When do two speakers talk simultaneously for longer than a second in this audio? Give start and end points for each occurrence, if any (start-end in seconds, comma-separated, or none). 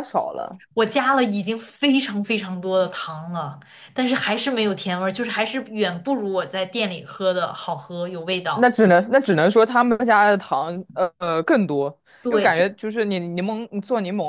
none